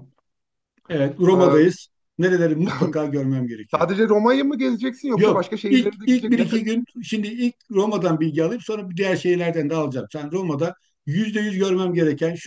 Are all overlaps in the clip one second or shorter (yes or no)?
no